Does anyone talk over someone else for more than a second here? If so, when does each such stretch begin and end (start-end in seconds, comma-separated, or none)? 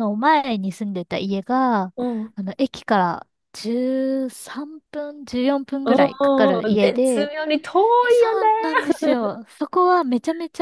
5.8-7.3